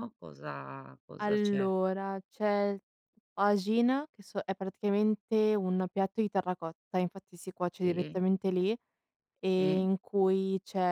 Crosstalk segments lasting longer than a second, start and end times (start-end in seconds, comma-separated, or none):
none